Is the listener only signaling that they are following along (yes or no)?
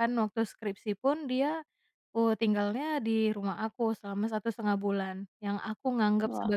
yes